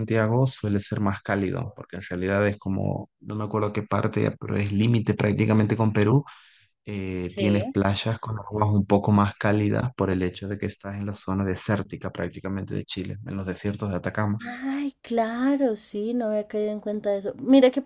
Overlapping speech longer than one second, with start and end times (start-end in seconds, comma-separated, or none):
none